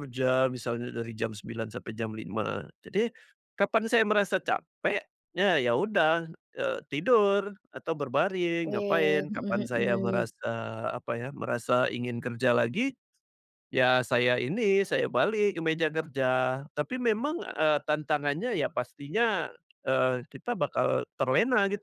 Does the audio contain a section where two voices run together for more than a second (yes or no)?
yes